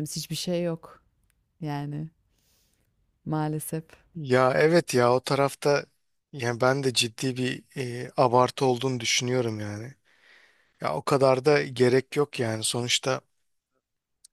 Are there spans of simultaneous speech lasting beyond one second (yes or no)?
no